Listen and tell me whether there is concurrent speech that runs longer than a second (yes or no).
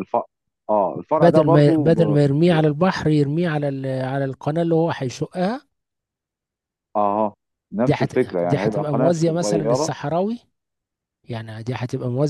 yes